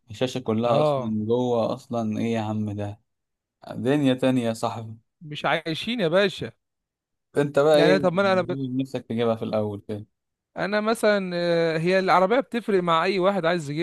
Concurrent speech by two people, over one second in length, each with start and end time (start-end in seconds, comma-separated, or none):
none